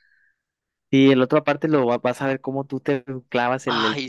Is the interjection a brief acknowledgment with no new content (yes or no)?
no